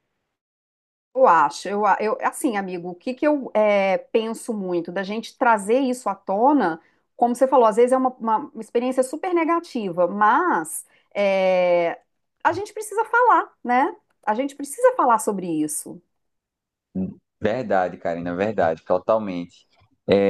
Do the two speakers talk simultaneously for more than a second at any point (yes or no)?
no